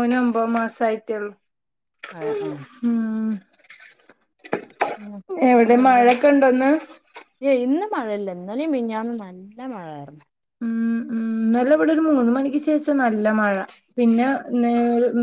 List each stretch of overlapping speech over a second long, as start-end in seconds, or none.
none